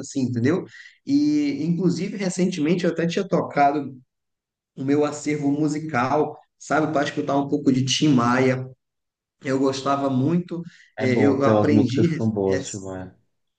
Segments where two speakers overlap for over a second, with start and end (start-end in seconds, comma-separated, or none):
11.0-12.7